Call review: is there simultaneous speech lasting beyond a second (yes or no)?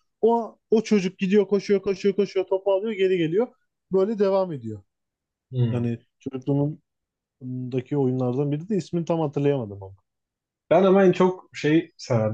no